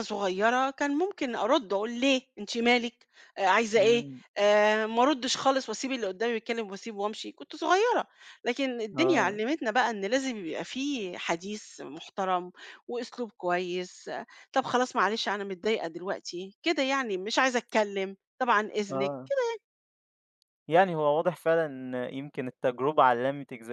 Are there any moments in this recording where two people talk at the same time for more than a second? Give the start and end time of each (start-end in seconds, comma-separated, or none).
none